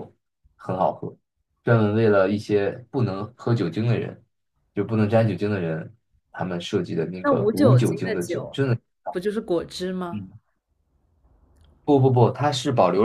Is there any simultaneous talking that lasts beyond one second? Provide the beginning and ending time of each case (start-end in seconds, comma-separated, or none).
7.2-8.6